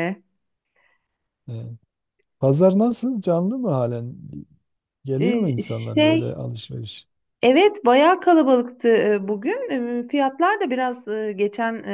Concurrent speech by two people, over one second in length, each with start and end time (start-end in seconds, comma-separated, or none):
5.2-6.4